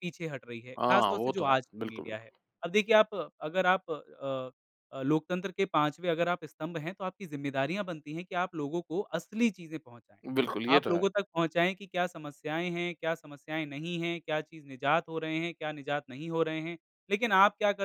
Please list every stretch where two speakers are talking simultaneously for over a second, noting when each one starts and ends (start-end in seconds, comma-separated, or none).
0.8-2.3